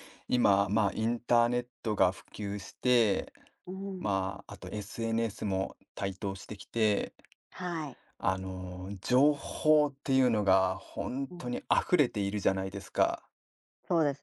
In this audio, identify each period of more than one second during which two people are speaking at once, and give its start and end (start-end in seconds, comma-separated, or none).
none